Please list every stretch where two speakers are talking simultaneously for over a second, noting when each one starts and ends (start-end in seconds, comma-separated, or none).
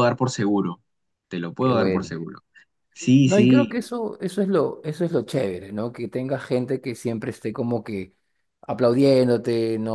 none